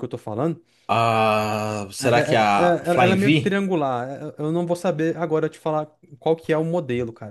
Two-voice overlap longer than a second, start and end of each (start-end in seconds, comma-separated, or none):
2.0-3.6